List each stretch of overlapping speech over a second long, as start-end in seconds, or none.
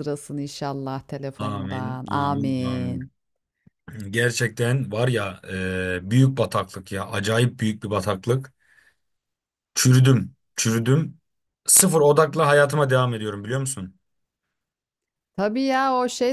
1.4-3.0